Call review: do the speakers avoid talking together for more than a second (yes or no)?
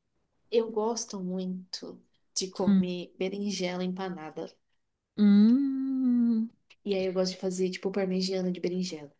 yes